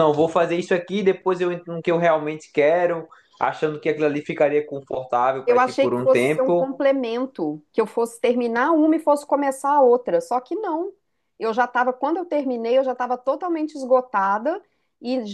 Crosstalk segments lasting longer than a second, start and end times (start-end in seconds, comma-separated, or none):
5.4-6.7